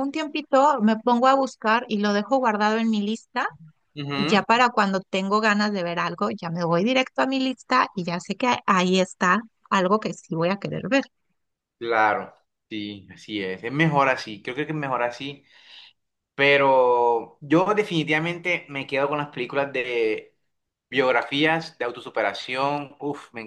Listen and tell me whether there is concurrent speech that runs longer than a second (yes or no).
no